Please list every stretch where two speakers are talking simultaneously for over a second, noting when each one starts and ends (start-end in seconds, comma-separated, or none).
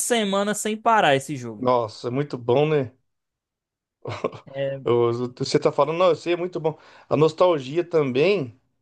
none